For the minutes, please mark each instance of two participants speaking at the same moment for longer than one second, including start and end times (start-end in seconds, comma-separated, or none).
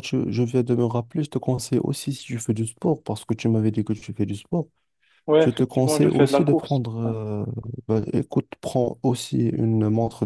5.4-7.2